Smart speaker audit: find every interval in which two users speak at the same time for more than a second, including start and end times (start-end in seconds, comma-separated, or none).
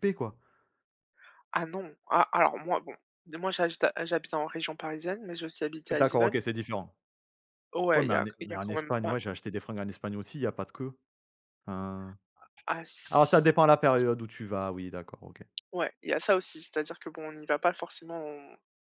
7.9-9.3